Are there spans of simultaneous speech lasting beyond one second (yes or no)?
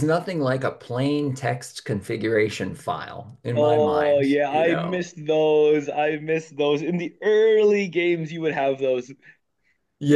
yes